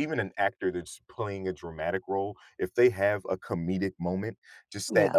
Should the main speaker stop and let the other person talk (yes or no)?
no